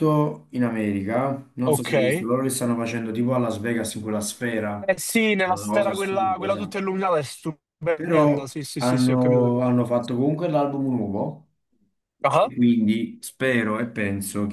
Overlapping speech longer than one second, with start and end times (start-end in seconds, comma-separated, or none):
5.5-6.8, 7.9-9.6